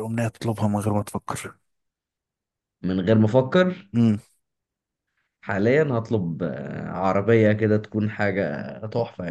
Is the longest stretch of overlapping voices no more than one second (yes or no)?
yes